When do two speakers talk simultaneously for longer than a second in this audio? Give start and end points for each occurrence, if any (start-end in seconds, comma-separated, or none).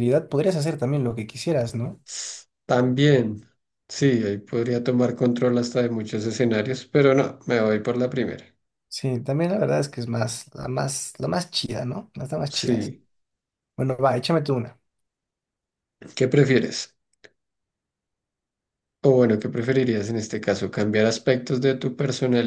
none